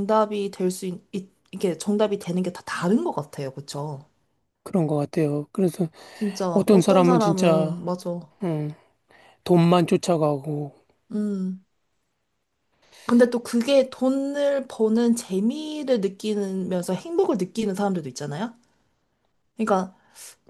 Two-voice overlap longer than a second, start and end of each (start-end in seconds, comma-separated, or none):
6.5-7.8